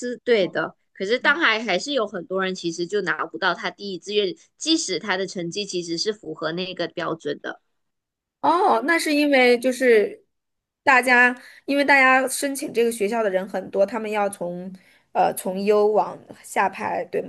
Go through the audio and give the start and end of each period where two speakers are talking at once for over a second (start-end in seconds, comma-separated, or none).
none